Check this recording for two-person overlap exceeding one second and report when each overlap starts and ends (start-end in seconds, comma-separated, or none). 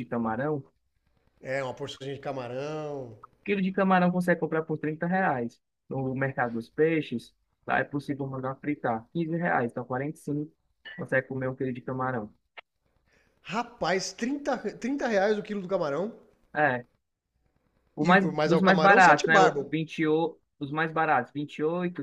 18.0-19.7